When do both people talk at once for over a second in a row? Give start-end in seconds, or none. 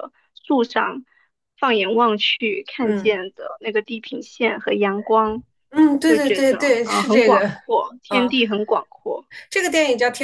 6.0-7.5